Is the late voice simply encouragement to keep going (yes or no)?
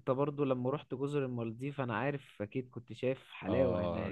no